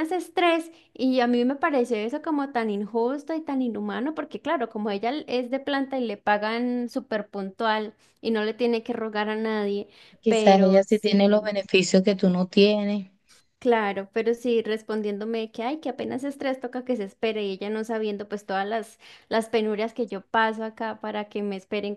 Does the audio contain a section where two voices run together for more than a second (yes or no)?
yes